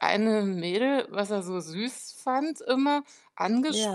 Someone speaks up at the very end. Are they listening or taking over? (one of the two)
listening